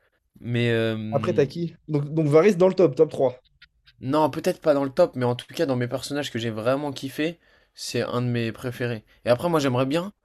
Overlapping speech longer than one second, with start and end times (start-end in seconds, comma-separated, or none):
none